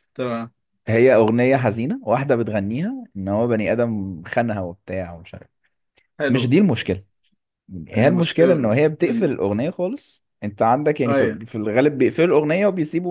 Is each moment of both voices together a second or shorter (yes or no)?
no